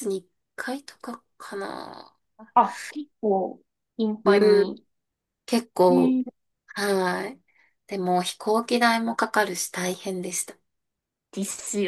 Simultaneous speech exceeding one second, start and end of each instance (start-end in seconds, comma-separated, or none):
none